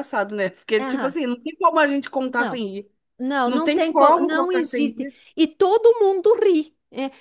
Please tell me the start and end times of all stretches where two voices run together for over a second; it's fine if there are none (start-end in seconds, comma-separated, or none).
3.4-5.2